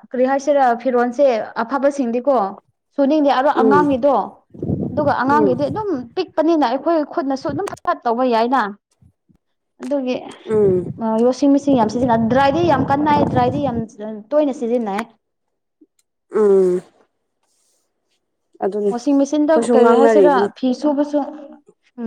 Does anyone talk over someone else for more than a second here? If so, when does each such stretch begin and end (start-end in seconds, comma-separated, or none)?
18.9-20.5